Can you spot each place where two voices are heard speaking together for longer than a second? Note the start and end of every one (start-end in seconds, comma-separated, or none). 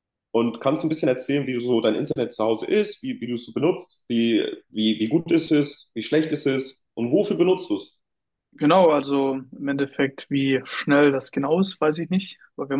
none